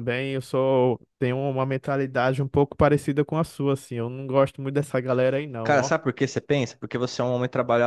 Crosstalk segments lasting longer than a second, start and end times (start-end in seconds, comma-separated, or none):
none